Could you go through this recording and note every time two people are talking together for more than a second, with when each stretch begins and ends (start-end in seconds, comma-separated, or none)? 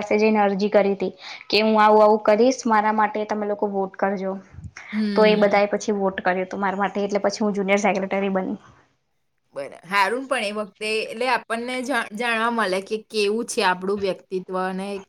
none